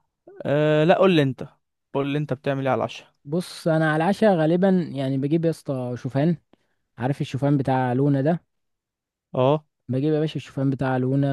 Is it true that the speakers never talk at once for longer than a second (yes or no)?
yes